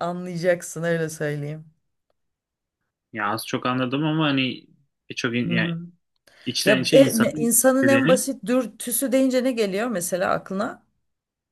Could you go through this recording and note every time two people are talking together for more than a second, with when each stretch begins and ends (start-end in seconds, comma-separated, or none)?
6.6-8.2